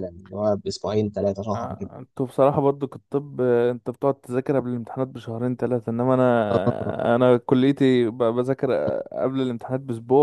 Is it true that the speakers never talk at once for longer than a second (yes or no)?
yes